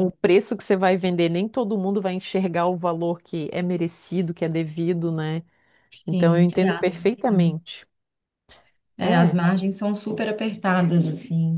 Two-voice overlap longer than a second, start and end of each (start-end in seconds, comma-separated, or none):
6.1-7.5